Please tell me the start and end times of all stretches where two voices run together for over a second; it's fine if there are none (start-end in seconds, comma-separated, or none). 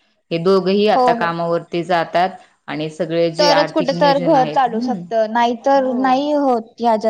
3.4-5.0